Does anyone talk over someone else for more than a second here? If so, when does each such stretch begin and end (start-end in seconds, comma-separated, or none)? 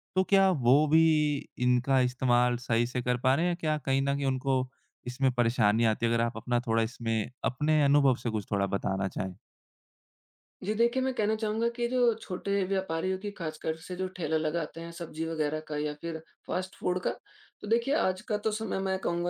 none